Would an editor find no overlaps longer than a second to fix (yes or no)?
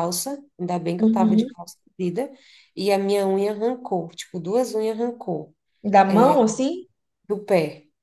yes